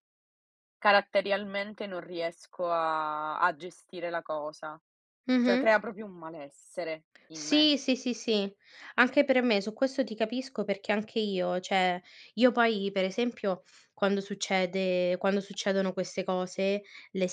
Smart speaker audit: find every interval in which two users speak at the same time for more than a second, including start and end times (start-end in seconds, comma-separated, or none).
none